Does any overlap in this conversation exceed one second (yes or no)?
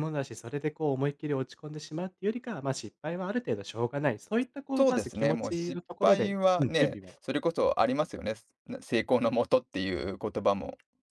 yes